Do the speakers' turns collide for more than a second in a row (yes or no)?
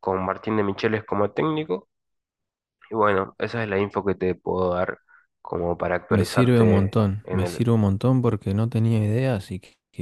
yes